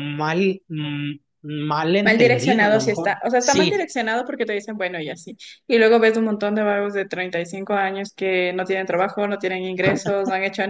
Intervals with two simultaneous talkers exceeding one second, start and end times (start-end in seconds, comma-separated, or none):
2.0-3.9